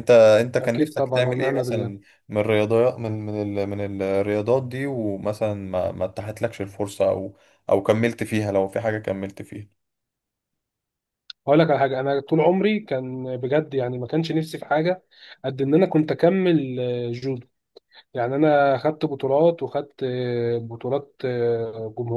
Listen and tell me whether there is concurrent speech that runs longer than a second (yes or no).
yes